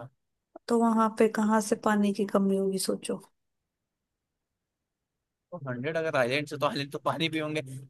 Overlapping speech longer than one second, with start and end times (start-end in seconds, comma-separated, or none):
none